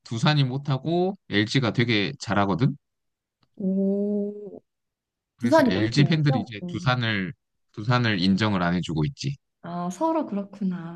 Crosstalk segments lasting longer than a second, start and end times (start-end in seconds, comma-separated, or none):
5.4-6.9